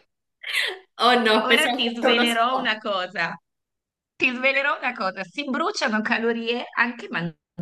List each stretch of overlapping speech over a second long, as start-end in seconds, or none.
1.4-2.8